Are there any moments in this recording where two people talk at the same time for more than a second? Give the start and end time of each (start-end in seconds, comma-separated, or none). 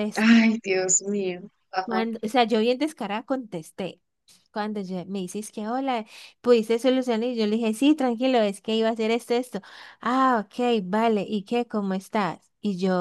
none